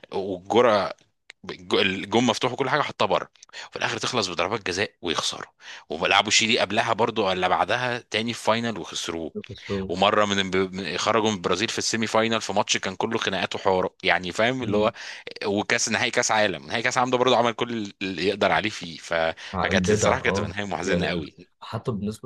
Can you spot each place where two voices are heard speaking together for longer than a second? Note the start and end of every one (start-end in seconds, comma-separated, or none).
19.6-21.3